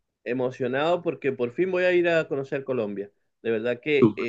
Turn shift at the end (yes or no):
no